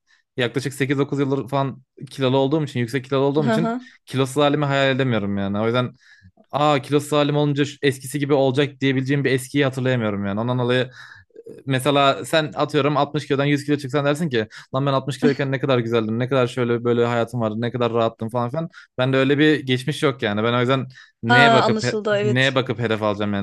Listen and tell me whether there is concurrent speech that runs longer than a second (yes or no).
yes